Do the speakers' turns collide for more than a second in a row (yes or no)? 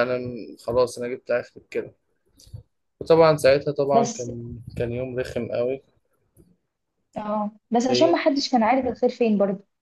no